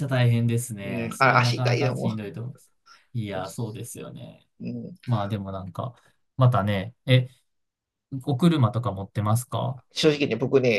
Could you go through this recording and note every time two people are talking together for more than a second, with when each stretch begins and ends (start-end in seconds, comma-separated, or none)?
0.8-2.2